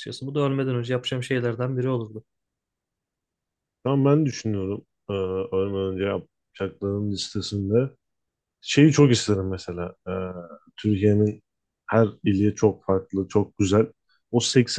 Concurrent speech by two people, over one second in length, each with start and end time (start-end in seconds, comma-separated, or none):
none